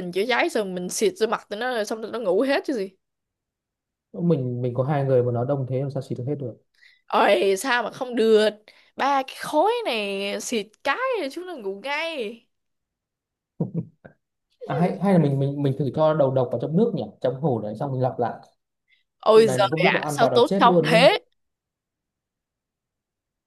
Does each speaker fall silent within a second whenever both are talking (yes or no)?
no